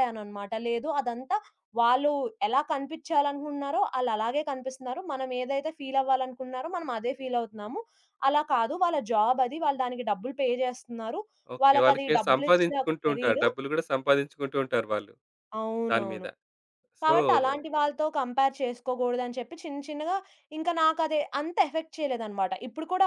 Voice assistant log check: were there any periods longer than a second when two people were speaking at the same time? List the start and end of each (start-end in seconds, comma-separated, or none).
11.6-13.5